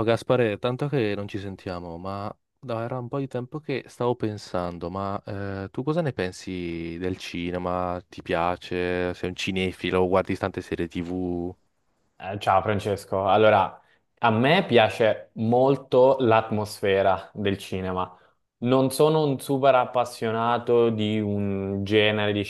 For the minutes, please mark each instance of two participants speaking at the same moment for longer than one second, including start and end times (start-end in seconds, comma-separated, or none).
none